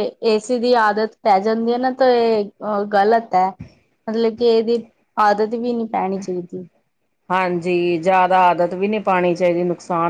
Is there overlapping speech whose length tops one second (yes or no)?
no